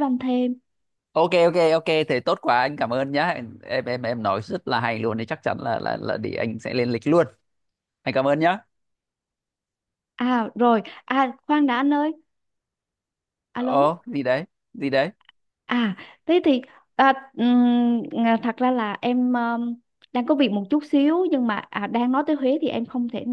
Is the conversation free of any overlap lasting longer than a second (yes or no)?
yes